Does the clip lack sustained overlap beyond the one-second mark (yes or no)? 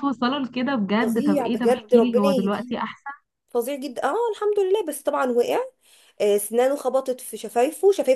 no